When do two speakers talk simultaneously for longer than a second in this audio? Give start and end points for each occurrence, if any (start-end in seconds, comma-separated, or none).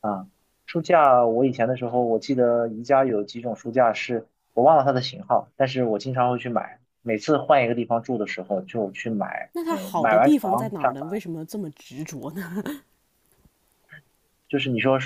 9.5-11.1